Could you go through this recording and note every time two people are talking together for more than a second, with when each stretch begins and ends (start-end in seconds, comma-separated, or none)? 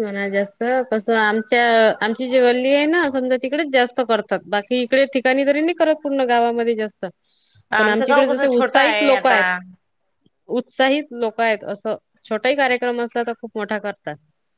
7.8-9.4